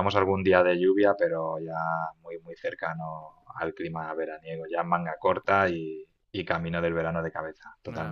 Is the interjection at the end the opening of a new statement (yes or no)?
yes